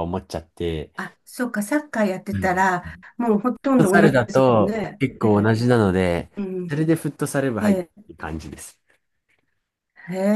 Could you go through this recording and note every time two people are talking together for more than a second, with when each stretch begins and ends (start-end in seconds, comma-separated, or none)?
3.8-5.6